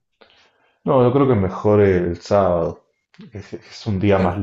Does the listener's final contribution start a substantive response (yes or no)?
no